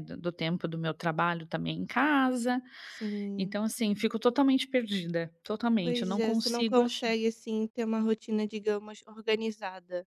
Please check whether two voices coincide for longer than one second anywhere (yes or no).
yes